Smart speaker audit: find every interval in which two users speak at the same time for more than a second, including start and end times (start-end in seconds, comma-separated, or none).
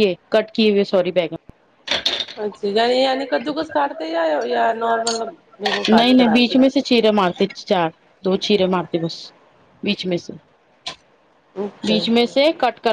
none